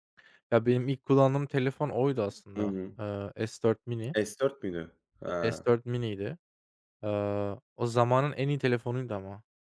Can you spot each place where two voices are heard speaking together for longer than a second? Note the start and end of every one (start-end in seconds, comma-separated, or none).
none